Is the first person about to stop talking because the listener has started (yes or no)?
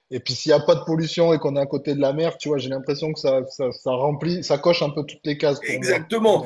yes